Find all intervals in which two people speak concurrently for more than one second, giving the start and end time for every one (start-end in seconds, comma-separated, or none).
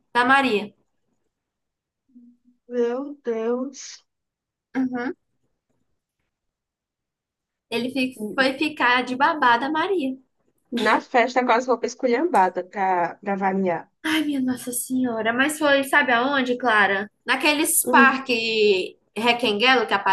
none